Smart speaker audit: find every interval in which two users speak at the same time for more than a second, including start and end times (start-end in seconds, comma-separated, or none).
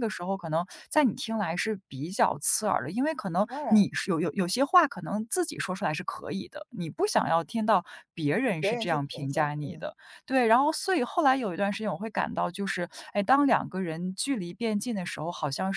8.6-9.9